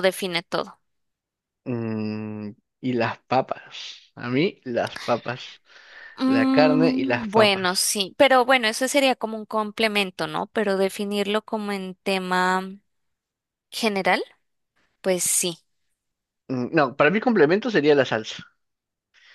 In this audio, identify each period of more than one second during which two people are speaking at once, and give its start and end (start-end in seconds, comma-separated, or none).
6.3-7.6